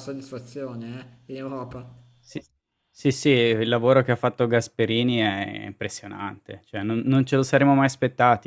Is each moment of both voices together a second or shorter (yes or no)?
yes